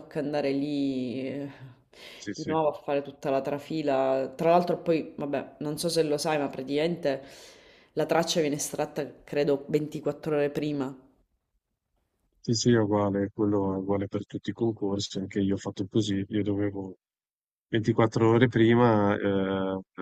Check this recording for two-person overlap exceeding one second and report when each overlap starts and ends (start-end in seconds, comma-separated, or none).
none